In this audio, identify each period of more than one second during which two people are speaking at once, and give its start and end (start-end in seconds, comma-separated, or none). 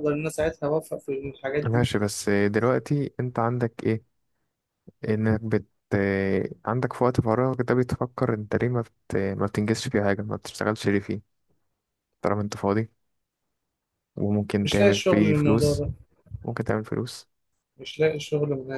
14.6-15.8